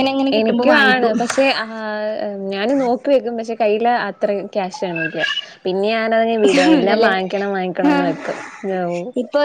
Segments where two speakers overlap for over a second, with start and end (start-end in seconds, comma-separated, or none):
none